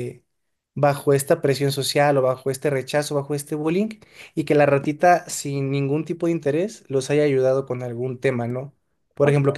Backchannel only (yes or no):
yes